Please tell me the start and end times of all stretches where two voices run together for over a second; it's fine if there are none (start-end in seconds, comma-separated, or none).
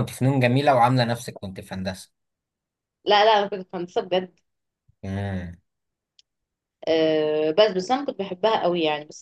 none